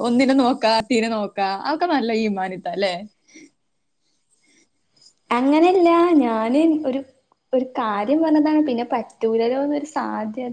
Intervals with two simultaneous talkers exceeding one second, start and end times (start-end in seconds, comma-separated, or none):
none